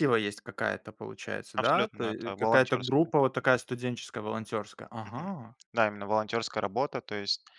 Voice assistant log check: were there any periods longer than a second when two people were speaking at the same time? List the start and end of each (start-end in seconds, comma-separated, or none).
1.6-3.1